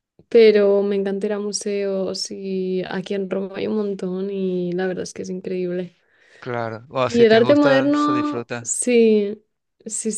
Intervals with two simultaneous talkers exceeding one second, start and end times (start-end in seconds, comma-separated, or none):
7.0-8.8